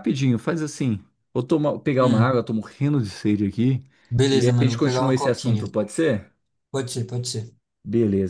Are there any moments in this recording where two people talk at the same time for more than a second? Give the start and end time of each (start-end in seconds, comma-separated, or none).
4.3-5.6